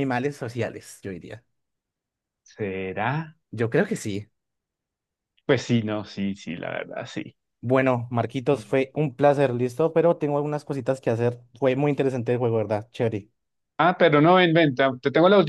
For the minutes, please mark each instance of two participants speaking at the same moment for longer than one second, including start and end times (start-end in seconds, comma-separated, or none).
none